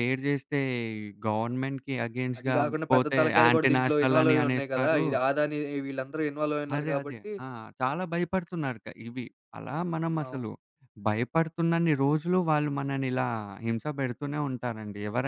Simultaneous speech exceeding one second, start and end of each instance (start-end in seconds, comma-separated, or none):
2.4-5.0